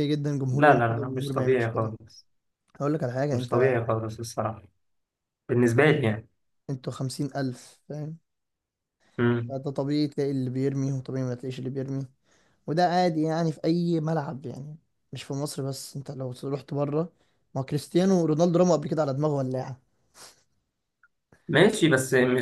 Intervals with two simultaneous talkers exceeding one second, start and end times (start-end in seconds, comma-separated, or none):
0.5-1.9